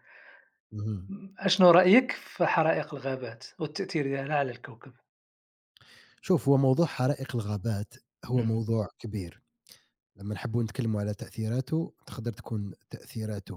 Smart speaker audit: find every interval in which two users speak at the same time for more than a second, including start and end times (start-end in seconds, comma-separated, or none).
none